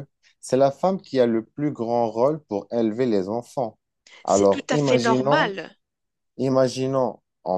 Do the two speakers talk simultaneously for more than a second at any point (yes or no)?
yes